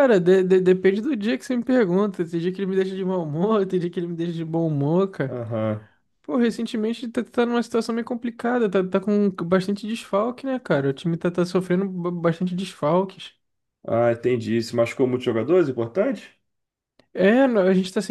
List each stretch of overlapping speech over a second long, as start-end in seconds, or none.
none